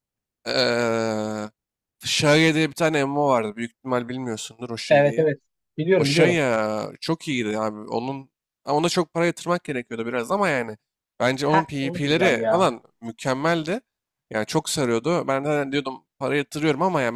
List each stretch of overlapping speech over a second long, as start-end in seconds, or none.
11.4-12.6